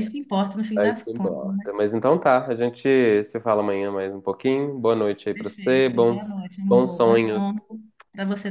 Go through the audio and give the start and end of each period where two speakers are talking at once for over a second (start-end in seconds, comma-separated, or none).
5.3-7.5